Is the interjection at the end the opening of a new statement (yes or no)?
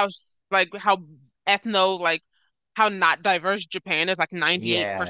no